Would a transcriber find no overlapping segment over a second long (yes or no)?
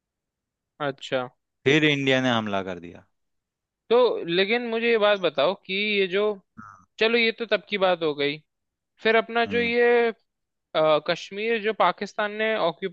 yes